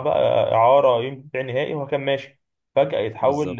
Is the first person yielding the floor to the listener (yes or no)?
no